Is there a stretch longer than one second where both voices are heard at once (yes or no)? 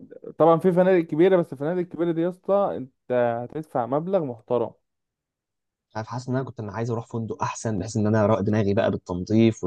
no